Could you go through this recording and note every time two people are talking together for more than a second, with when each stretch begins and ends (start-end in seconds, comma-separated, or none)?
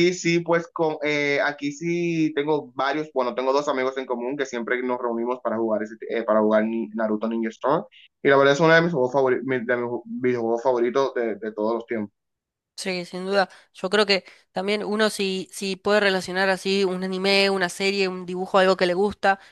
none